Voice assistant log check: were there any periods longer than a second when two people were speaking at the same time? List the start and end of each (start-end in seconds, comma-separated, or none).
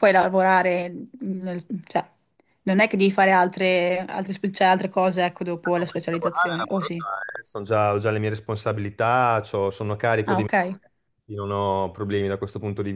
5.7-7.0